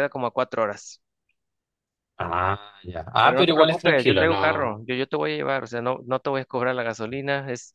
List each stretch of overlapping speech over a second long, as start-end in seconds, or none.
3.2-4.8